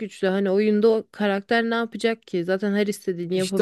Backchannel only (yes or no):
no